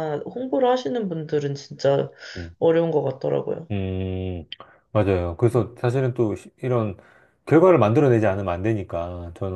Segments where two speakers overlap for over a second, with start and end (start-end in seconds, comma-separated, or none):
none